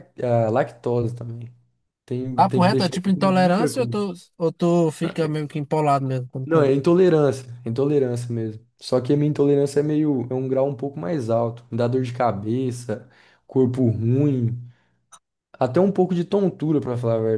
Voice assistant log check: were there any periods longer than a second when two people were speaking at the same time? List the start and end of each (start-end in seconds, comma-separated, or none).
2.4-4.0